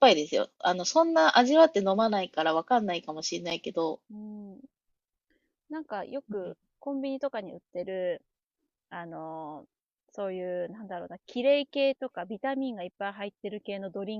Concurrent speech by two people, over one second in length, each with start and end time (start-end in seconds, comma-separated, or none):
none